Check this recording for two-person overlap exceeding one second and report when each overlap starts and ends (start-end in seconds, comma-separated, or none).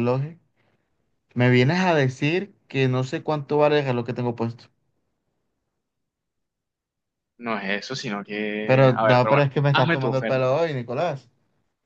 8.7-10.6